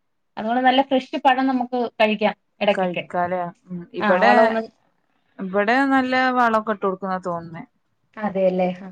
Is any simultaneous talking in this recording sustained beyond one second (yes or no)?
no